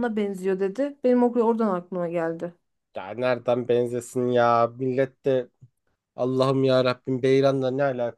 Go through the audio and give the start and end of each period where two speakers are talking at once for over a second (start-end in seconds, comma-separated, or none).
none